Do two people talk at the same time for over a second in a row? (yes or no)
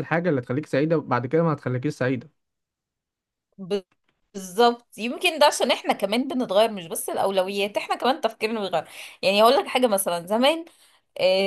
no